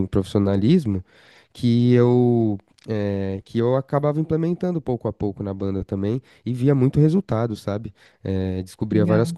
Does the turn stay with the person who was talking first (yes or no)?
yes